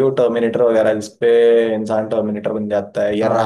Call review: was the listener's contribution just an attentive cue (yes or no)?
no